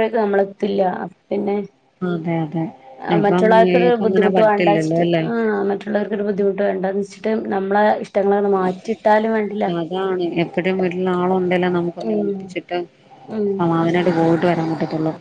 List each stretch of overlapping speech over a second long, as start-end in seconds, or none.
3.2-5.2